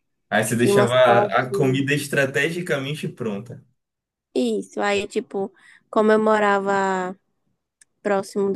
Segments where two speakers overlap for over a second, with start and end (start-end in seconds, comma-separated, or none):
0.6-1.9